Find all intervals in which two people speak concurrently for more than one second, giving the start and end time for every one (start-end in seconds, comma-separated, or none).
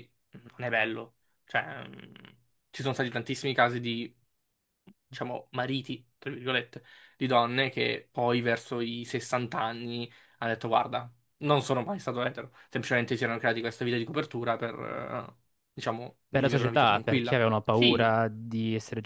16.3-18.1